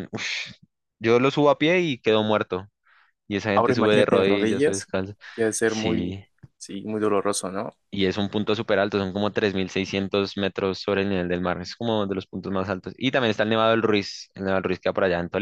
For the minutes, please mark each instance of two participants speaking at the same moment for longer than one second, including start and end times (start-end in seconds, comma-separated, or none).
3.5-4.9